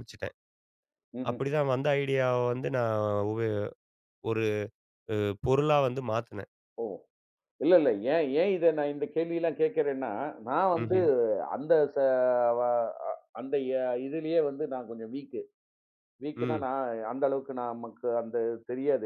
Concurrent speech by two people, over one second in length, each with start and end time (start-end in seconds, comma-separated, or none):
none